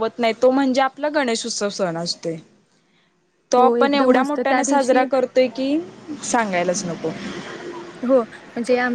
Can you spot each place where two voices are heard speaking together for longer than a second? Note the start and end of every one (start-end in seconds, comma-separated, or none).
3.6-5.0